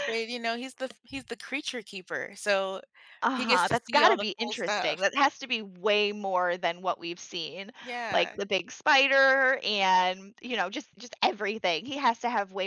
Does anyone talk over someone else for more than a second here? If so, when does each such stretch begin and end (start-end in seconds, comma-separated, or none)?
3.3-5.0